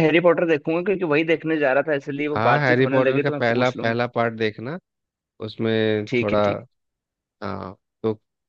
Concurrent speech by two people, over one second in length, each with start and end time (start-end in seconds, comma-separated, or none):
2.3-3.9